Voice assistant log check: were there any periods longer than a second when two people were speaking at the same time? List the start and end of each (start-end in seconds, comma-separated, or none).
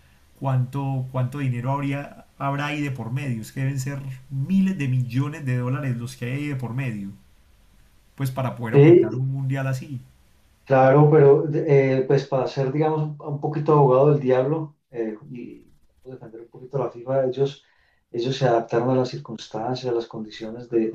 none